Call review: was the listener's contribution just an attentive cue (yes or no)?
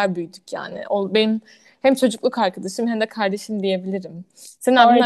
no